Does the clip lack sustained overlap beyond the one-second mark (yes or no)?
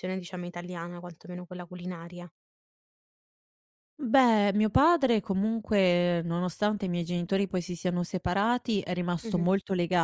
yes